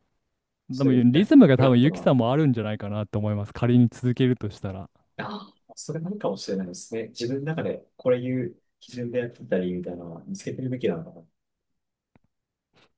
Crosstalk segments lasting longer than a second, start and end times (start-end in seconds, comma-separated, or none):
0.7-2.1